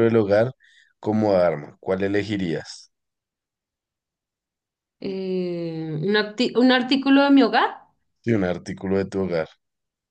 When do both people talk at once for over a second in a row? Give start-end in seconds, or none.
none